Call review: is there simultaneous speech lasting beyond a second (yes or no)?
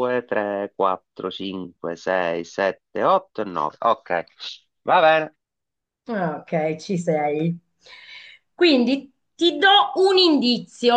no